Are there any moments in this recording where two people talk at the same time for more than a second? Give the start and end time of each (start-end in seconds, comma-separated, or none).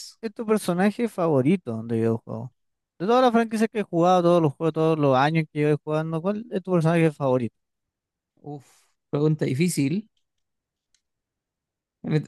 none